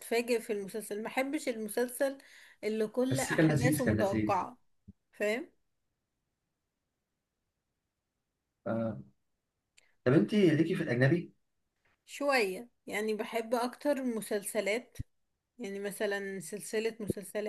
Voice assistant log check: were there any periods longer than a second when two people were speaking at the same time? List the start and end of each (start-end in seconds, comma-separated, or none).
3.1-4.4